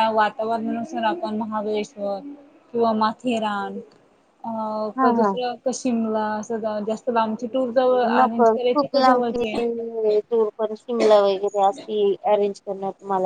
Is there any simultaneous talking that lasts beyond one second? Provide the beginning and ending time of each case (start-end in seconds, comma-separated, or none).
8.1-9.6